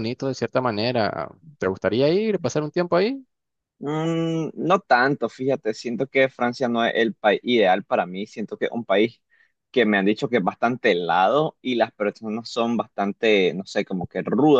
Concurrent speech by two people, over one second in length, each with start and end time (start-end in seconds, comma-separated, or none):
none